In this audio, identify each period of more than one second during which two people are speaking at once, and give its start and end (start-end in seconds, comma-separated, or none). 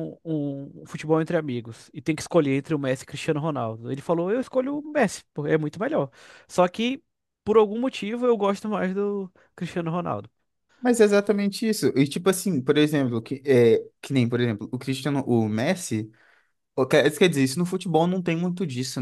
none